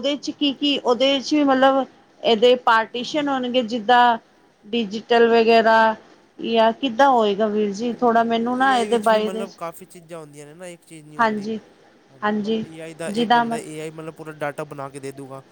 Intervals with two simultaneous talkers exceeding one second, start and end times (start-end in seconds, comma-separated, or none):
7.9-9.4